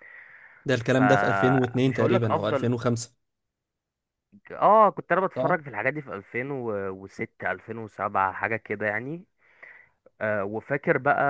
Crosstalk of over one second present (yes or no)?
yes